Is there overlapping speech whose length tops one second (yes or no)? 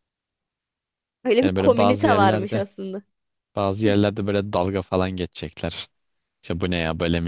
yes